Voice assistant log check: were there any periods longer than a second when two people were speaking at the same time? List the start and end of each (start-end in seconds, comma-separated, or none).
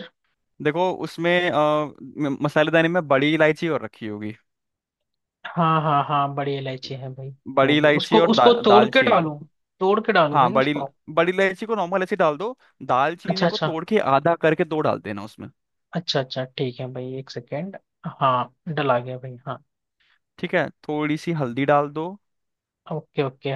7.5-9.3